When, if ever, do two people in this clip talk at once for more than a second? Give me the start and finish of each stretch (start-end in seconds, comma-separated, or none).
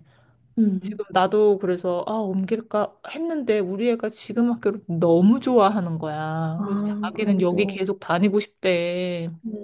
6.6-7.9